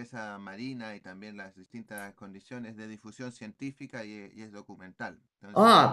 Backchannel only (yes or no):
no